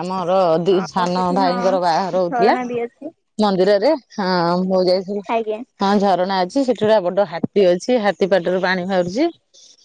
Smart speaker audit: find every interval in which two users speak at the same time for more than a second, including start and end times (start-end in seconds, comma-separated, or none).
0.8-2.5